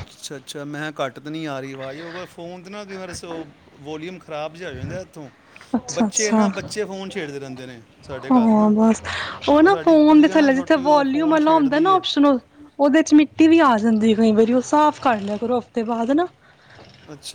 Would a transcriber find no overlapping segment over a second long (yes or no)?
no